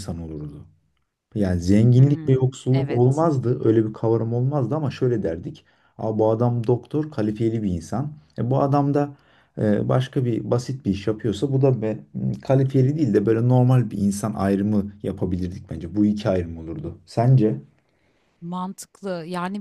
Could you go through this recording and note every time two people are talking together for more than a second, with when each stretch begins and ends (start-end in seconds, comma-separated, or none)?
2.0-3.2